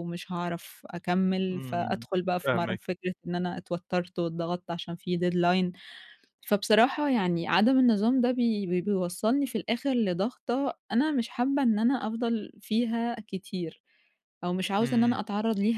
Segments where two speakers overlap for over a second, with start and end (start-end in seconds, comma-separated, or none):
1.5-3.0